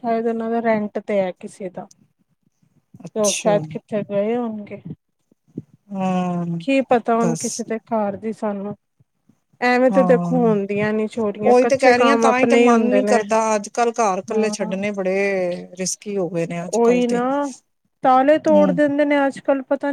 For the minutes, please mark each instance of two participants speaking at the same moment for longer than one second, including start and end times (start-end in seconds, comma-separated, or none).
11.5-13.2